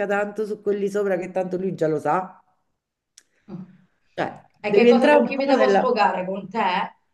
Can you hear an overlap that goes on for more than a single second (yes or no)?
yes